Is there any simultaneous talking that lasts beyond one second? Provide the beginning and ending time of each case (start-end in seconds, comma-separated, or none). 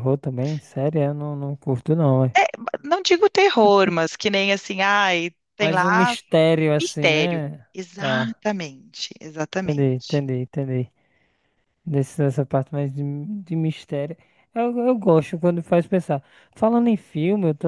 6.8-8.4